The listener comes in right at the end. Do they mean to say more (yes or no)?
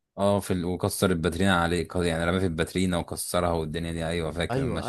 yes